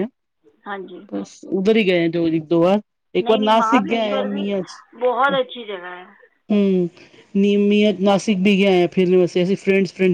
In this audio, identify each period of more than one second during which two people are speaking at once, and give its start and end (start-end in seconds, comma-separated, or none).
3.2-4.4